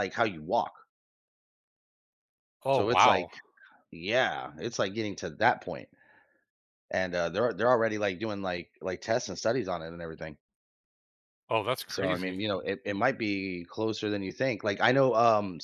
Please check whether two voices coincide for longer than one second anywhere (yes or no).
no